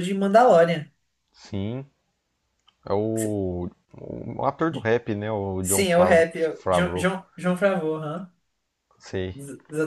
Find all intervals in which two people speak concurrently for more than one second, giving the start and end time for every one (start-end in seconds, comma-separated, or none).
5.6-7.1